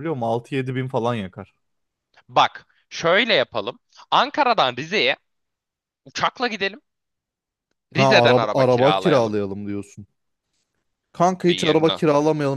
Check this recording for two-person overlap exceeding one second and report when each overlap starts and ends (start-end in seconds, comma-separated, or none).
8.0-9.3